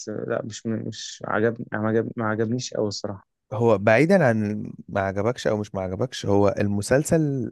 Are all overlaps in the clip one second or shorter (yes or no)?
yes